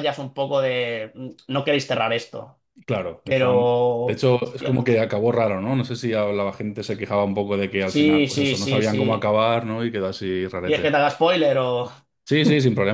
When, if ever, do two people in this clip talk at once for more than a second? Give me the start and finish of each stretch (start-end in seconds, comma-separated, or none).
3.2-4.8, 7.8-9.2